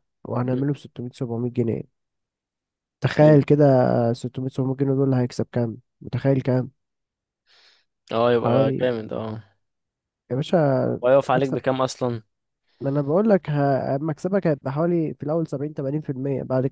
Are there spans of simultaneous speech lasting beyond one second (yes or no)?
no